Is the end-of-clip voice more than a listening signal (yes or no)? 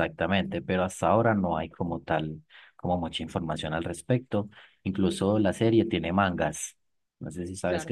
yes